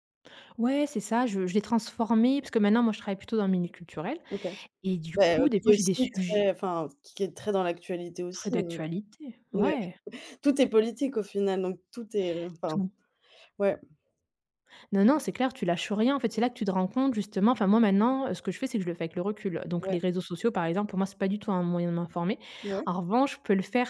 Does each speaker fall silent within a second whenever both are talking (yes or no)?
no